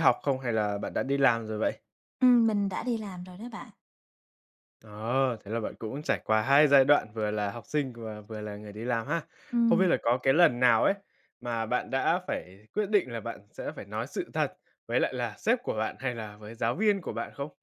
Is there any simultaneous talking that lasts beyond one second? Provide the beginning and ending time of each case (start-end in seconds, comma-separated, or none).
none